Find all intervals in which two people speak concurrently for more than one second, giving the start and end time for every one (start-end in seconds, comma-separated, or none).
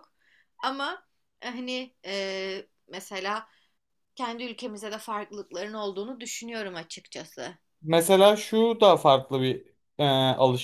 none